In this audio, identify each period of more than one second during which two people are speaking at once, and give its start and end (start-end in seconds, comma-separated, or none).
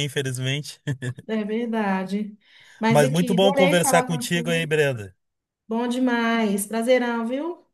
2.9-4.7